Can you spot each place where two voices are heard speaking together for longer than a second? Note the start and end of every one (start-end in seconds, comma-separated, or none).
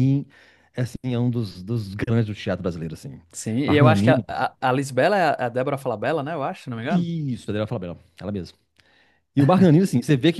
none